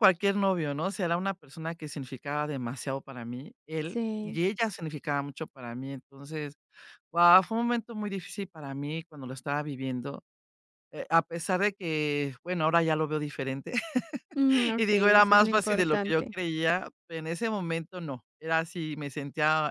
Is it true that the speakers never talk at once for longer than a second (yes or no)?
no